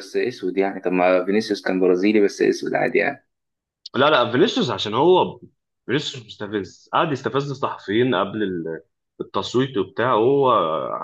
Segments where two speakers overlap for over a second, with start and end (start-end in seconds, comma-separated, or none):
none